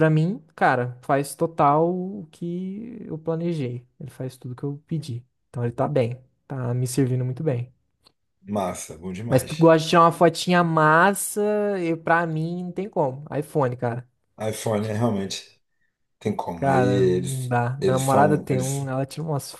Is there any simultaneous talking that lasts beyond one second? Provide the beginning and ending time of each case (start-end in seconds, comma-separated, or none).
16.5-18.9